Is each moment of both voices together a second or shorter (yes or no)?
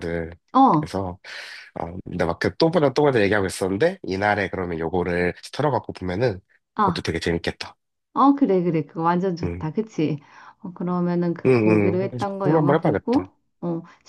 no